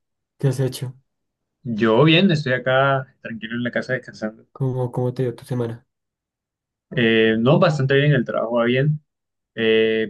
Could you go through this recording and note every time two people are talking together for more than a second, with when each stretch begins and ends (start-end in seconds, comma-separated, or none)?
none